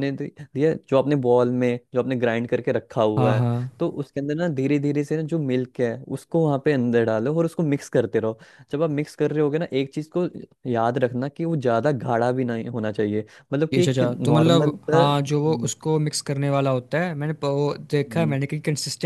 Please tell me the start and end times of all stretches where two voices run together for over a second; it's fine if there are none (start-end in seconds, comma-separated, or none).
13.7-15.7